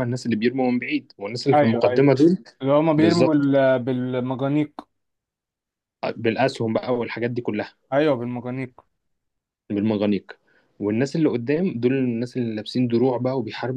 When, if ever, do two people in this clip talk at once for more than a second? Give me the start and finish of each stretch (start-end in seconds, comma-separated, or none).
none